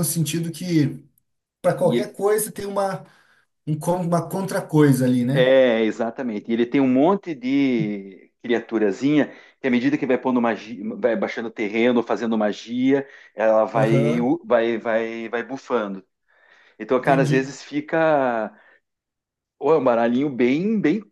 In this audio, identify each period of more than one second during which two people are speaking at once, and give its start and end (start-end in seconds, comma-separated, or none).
none